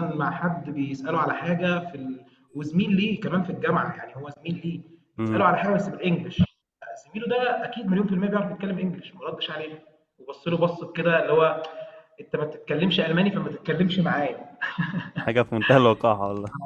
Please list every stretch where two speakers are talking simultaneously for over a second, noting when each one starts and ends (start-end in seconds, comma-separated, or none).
none